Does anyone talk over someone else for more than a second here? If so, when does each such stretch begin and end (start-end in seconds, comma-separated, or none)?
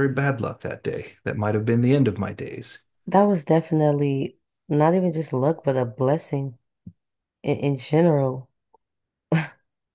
none